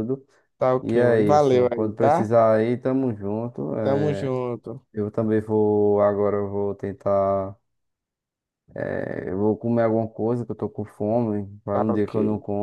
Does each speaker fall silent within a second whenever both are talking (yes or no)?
no